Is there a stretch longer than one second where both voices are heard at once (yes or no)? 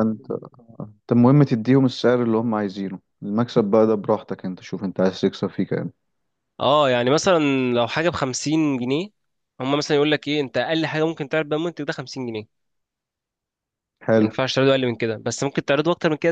no